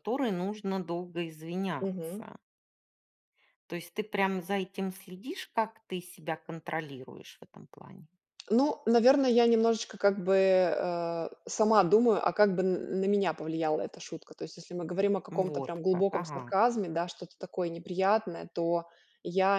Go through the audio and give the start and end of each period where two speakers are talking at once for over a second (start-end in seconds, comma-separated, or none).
15.3-16.5